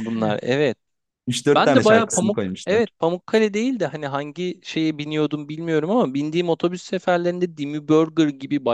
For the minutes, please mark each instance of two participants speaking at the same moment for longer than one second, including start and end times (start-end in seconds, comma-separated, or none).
1.5-2.8